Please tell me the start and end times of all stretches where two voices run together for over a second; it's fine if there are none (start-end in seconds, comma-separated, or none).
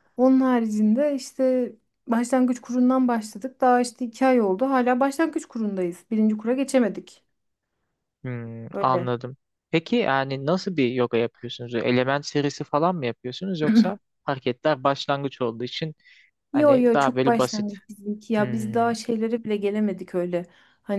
16.5-17.7